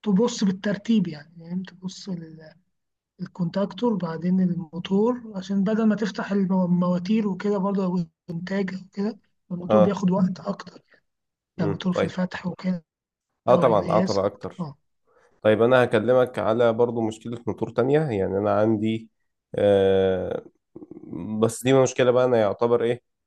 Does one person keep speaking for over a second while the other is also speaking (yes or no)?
yes